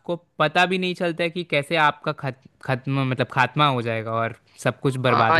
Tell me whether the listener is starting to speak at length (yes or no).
yes